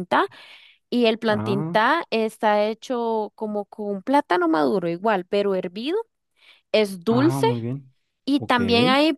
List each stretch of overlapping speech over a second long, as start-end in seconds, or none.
none